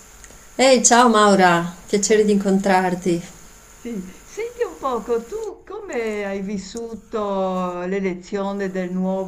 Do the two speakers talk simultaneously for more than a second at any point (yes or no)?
no